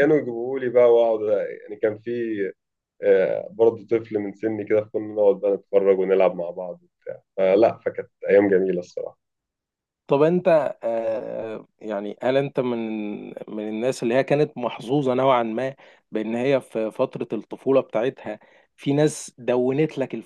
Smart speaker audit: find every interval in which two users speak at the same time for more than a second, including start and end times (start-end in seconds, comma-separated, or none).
none